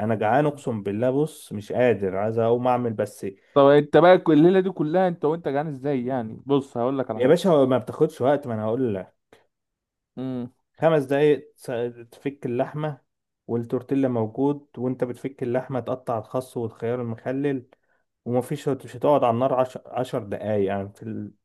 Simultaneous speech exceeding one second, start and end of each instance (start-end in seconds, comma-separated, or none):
none